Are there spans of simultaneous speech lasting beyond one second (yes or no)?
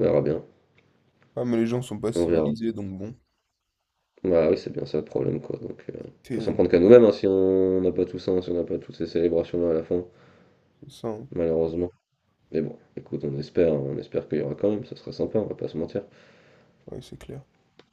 no